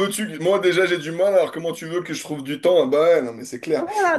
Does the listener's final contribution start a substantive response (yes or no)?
yes